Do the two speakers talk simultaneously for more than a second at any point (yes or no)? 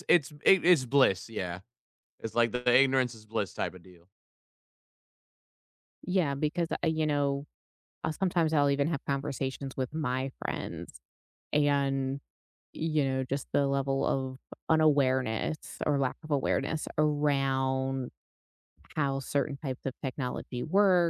no